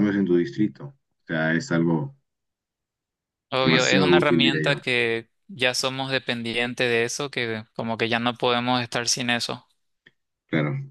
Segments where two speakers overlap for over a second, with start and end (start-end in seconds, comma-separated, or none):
3.6-4.8